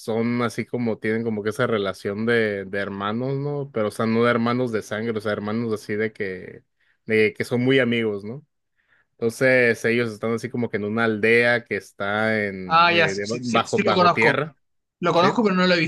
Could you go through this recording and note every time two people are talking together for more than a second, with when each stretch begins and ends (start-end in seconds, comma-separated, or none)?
12.7-14.4